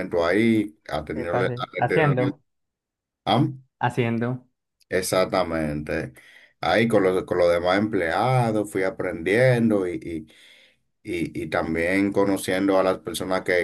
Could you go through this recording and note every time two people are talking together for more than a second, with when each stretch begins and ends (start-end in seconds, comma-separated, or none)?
1.1-2.4